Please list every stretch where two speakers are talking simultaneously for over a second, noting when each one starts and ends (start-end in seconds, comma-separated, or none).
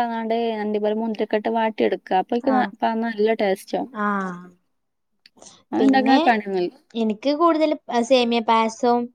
none